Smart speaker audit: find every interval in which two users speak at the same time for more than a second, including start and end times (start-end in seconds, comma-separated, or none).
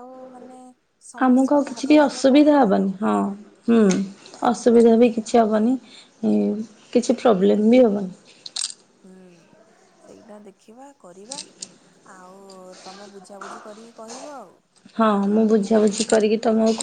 1.2-3.0